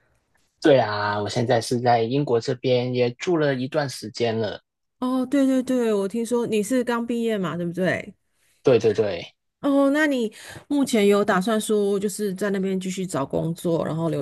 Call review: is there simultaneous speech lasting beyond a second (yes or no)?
no